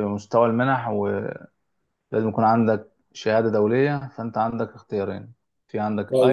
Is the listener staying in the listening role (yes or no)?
no